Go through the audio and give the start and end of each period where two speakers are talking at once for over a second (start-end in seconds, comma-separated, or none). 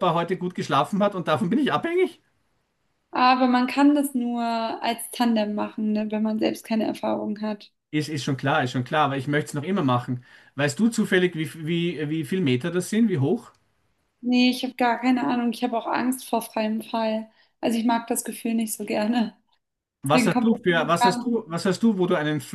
20.0-21.4